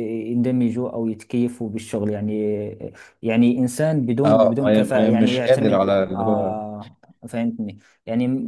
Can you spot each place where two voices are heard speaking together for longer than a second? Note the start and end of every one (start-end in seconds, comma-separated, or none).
4.2-6.5